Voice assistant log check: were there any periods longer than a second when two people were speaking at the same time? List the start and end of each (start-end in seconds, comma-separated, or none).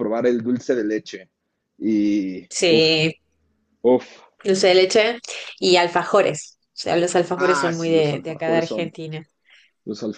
7.4-8.9